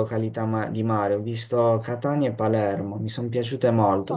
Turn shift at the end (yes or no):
no